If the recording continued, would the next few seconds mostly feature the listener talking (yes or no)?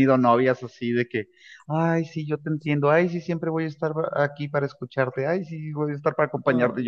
no